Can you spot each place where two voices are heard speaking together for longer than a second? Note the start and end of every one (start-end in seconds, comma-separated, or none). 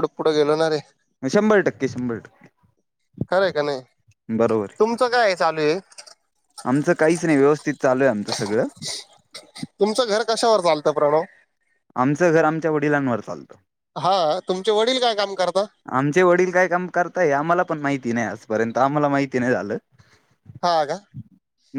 none